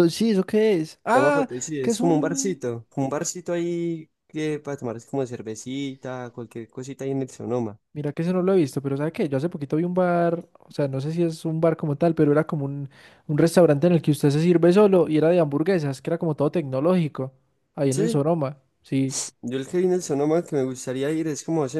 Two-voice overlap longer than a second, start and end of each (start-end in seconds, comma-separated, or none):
1.1-2.6